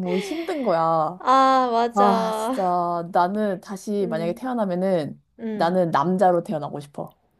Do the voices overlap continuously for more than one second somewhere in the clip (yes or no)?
no